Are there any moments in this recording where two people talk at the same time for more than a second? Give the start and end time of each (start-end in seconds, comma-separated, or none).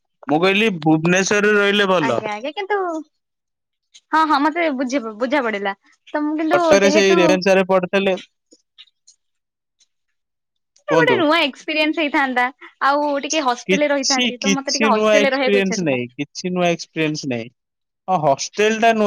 13.7-16.0